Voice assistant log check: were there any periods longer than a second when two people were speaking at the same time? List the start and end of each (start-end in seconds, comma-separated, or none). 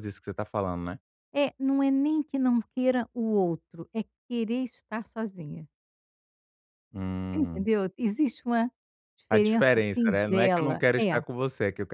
9.3-11.2